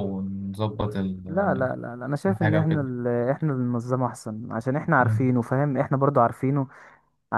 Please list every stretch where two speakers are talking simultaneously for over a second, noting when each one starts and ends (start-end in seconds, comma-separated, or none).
none